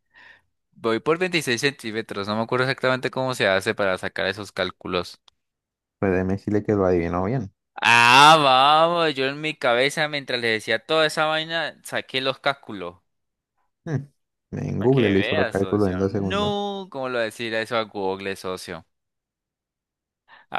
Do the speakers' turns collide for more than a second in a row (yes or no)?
yes